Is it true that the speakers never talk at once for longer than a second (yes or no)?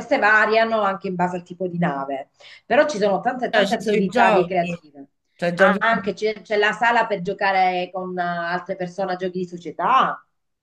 no